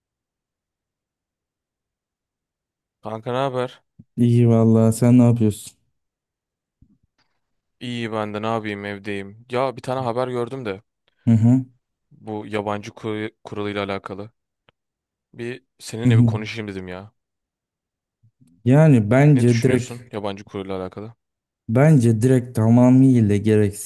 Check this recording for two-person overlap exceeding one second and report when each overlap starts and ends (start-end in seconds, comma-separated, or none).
none